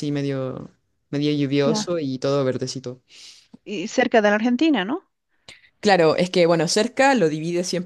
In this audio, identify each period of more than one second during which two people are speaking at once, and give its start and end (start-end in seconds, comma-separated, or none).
none